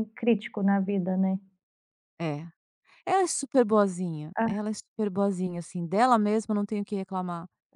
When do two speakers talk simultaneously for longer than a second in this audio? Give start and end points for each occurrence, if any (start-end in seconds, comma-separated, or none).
none